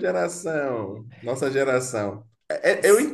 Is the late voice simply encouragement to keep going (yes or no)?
yes